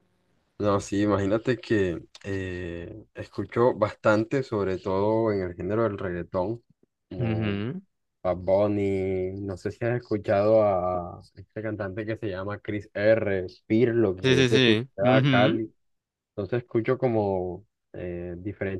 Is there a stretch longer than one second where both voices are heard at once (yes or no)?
yes